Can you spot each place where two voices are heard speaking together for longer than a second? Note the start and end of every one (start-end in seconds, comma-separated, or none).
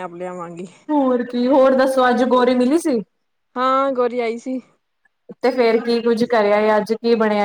none